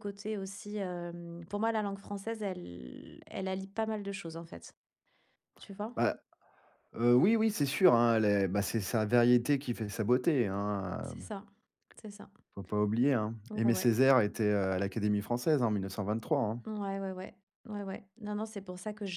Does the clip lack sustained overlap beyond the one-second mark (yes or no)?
yes